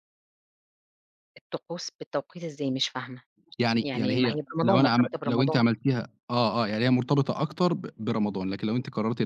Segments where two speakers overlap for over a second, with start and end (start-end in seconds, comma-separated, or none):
3.8-5.6